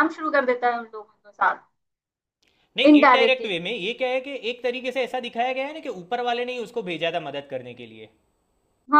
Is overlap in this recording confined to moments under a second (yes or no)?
yes